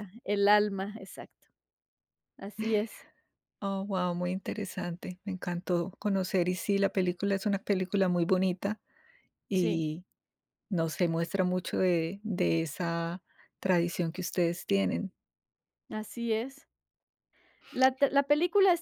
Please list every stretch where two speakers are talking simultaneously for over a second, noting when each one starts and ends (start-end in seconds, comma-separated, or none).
none